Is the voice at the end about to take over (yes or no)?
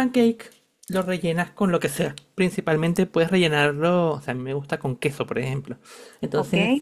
no